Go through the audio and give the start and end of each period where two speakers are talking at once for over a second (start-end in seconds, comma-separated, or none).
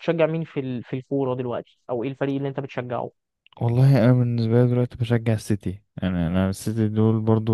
none